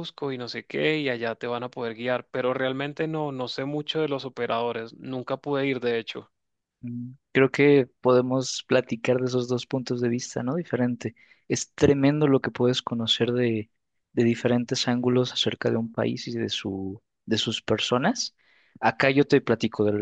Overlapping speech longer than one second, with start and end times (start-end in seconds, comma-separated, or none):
none